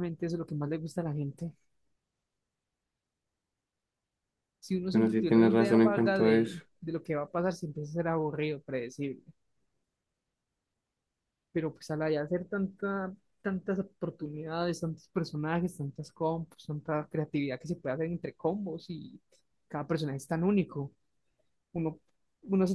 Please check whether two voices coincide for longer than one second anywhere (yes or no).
yes